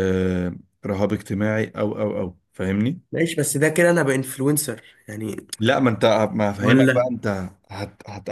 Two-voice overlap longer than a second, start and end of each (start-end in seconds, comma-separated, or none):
none